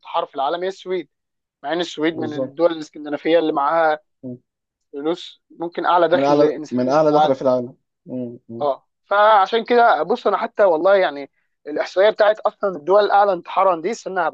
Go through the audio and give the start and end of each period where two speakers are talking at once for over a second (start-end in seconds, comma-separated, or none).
6.1-7.3